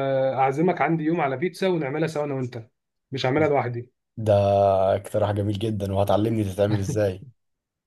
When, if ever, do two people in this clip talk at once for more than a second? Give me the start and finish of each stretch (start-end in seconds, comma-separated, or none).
none